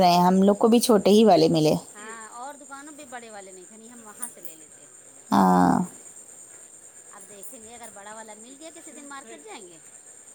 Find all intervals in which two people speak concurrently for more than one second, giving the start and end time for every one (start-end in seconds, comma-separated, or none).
none